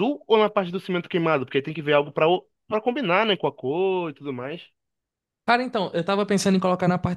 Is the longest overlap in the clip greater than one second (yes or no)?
no